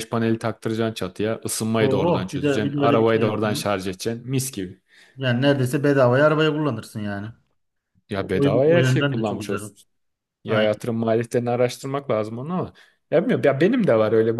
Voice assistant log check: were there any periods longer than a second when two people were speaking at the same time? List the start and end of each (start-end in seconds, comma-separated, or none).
1.8-3.6, 8.2-9.6